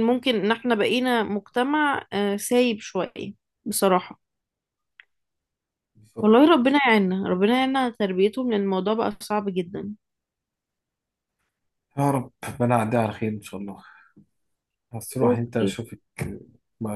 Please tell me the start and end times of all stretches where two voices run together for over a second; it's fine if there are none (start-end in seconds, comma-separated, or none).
none